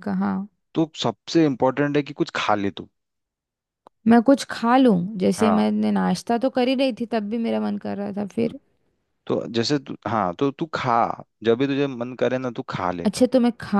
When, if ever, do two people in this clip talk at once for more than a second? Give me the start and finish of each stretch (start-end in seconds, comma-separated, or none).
none